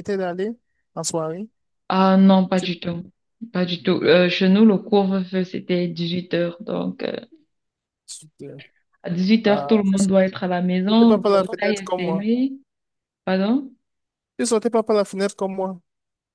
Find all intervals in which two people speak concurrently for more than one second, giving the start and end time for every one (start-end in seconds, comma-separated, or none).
10.9-12.2